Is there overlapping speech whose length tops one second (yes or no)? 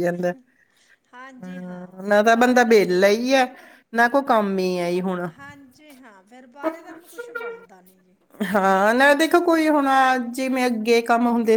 yes